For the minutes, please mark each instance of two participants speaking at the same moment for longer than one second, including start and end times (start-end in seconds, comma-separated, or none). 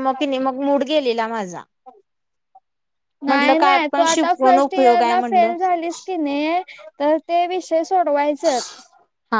3.3-5.5